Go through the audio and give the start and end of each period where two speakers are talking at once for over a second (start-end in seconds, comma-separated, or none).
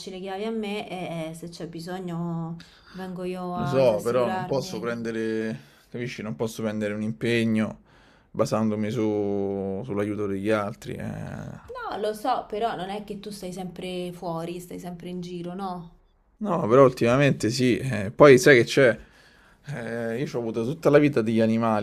3.5-4.9